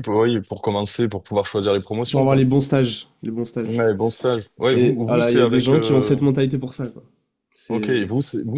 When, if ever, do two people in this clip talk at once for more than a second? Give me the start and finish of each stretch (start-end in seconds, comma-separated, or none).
4.7-6.2